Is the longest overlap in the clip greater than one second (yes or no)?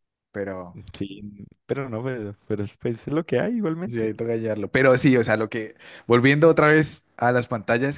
no